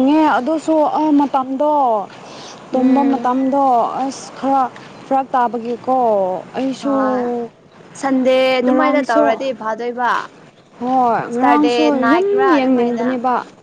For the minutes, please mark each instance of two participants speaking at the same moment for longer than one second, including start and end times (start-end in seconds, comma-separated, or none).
11.3-13.1